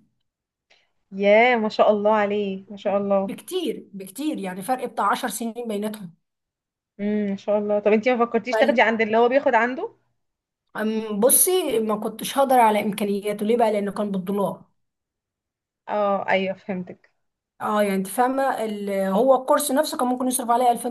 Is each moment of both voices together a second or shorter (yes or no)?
yes